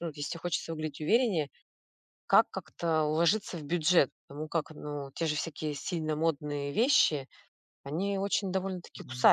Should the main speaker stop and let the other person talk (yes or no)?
yes